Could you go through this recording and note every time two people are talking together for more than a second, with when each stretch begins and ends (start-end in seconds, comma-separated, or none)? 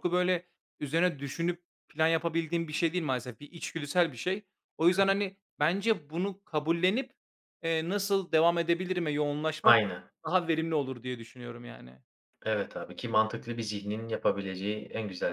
none